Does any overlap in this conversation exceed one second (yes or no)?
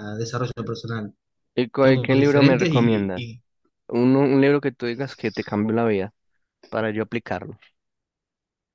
yes